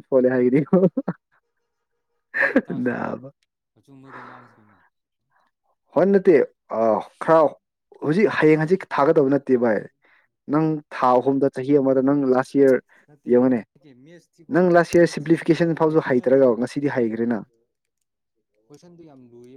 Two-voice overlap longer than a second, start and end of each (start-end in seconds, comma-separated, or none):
15.0-16.5